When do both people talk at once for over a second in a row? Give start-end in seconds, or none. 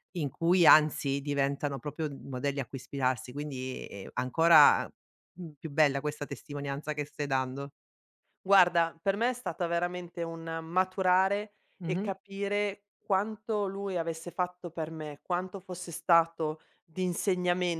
none